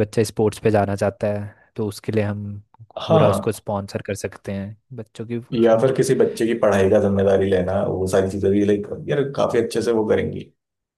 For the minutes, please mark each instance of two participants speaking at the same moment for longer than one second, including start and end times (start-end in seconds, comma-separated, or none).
none